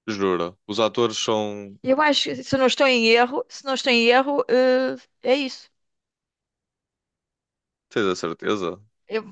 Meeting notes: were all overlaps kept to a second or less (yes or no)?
yes